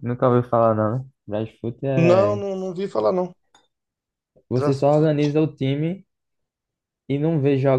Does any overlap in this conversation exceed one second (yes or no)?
no